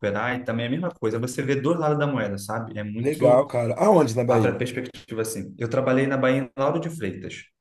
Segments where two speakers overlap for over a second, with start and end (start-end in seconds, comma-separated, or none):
none